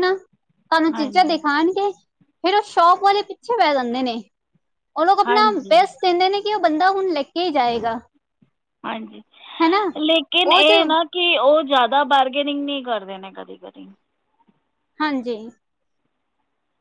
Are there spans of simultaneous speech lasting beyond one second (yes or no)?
no